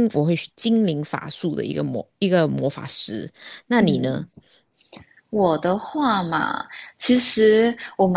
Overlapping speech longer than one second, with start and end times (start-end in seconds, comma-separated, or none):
none